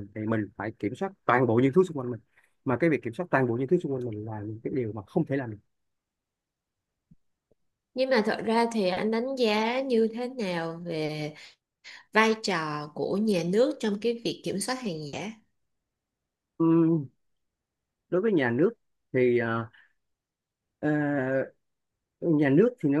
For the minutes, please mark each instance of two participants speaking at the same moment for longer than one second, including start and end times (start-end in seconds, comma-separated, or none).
none